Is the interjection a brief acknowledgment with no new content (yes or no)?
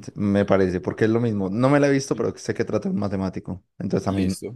no